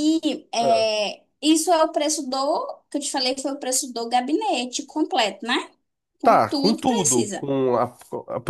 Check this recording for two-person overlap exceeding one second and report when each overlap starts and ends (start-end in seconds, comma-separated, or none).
6.2-7.5